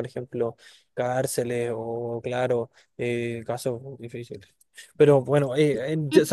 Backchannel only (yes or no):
yes